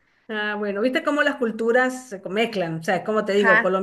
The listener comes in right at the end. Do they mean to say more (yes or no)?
no